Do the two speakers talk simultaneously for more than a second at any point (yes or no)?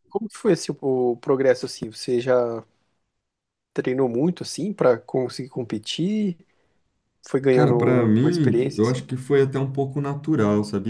yes